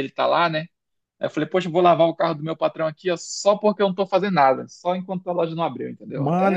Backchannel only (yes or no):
no